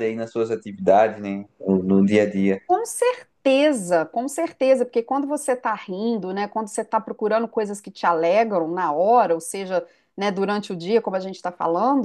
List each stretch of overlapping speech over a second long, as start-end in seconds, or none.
none